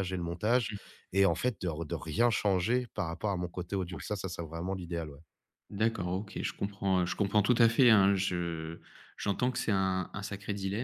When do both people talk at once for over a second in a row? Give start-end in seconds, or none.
none